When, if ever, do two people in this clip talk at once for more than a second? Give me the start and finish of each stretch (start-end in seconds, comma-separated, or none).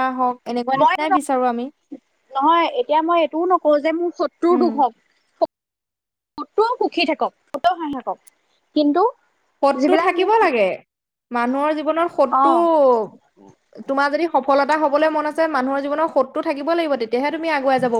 none